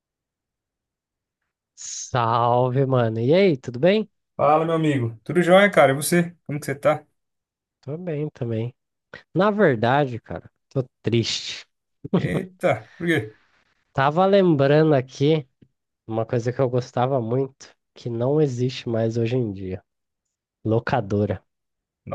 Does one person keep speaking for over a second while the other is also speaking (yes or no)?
no